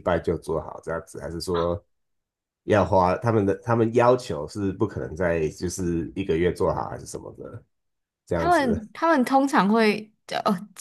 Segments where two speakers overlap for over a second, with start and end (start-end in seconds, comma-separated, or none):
none